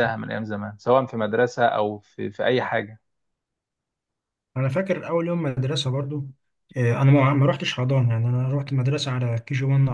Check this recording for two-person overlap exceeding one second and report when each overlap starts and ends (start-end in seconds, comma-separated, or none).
none